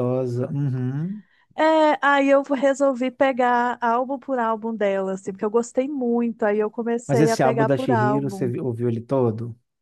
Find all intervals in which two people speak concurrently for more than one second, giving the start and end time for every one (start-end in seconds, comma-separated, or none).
7.1-8.5